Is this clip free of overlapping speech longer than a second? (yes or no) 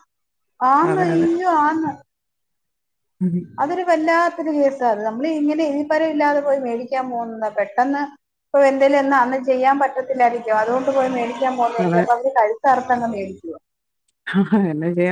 yes